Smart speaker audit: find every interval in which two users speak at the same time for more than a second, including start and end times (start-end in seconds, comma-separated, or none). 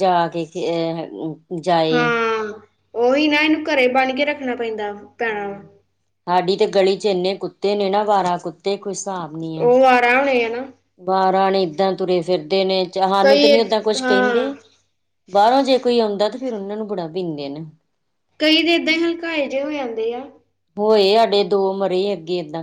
13.2-14.4